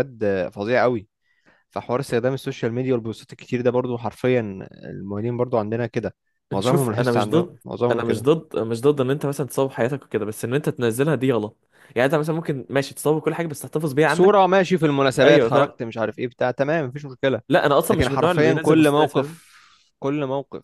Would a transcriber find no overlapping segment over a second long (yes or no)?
no